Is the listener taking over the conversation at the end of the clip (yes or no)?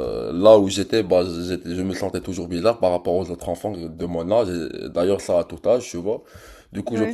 no